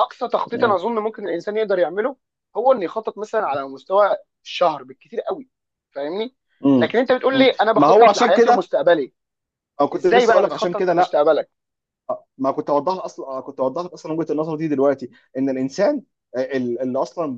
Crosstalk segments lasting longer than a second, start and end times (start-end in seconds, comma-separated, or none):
6.8-8.7, 9.9-11.2